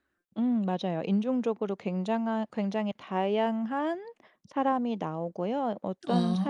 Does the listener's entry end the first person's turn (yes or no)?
no